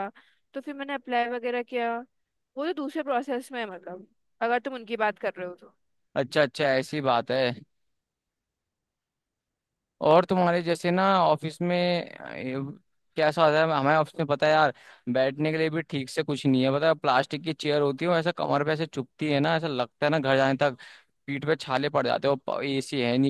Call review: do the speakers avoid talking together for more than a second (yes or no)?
yes